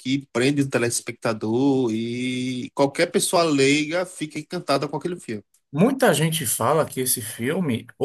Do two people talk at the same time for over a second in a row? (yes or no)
no